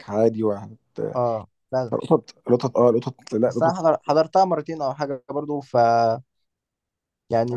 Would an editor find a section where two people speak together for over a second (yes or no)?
no